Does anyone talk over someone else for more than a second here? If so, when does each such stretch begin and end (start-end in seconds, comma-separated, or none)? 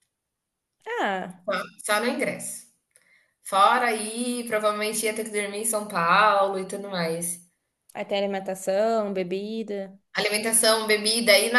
none